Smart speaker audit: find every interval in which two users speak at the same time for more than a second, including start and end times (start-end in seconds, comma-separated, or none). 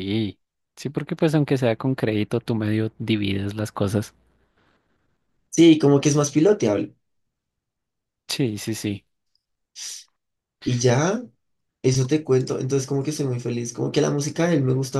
none